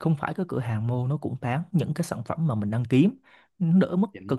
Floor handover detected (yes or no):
no